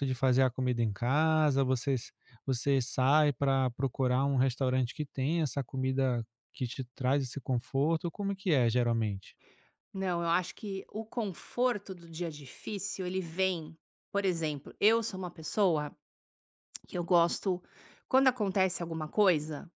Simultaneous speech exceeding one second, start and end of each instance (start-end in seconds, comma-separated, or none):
none